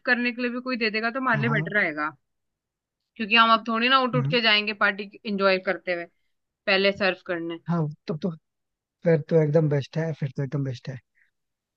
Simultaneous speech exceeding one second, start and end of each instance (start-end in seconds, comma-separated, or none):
none